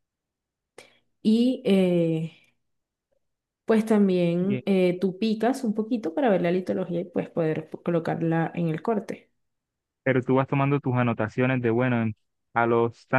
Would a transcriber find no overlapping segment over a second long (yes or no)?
yes